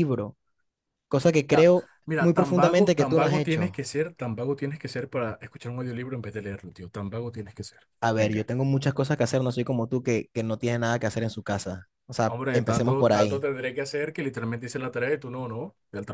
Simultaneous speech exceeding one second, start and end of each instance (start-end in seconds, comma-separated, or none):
1.5-3.8, 12.3-13.5